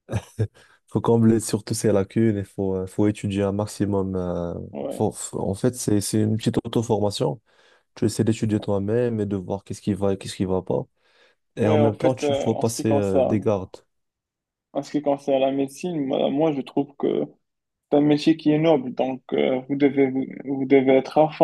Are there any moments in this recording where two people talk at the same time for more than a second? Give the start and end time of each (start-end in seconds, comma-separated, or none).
11.6-13.5